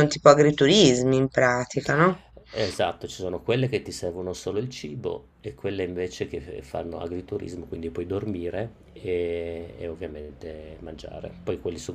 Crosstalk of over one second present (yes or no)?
no